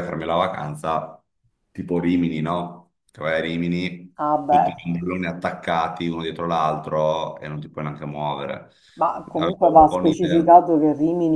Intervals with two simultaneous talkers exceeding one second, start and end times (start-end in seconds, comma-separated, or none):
9.3-10.6